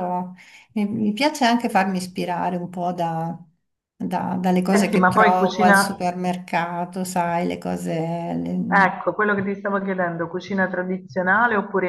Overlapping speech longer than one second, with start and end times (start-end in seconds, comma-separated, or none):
4.7-6.0